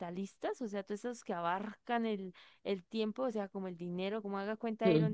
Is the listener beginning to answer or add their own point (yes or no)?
no